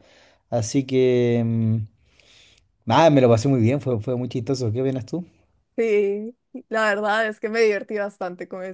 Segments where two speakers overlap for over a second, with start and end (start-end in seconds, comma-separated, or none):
none